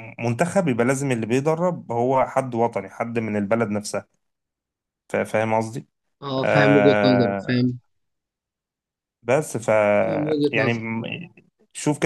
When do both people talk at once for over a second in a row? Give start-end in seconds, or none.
6.4-7.7